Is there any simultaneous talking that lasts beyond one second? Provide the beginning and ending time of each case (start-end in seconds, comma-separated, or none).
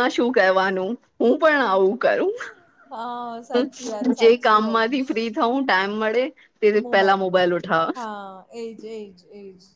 3.5-5.1